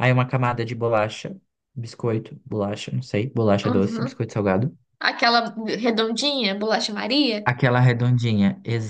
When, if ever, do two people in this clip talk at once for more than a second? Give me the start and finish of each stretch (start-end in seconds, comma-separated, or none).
none